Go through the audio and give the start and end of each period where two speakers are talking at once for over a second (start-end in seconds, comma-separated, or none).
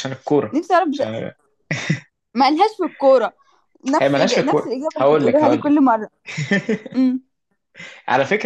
4.0-5.7